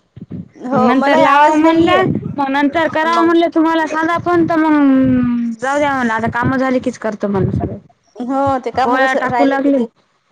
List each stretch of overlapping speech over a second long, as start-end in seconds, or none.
0.7-2.0